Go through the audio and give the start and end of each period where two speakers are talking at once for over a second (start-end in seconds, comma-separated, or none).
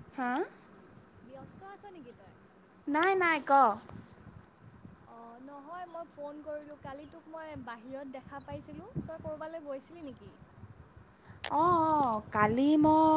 none